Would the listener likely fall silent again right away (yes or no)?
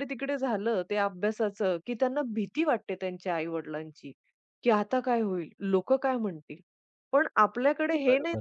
yes